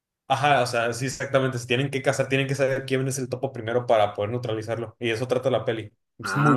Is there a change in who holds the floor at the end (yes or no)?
yes